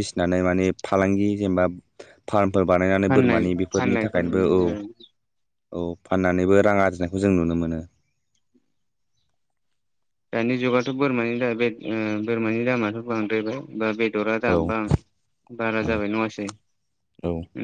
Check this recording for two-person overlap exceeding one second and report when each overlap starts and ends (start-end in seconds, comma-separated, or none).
3.0-4.7